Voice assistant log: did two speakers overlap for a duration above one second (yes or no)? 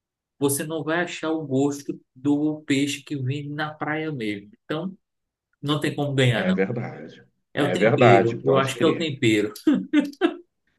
yes